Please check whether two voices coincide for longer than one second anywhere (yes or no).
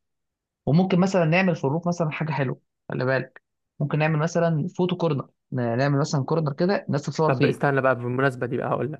no